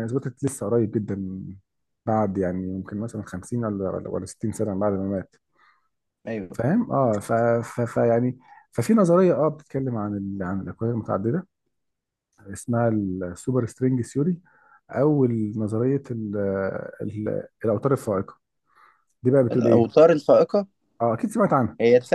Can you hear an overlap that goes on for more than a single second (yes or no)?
no